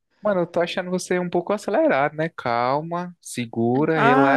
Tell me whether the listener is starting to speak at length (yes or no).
yes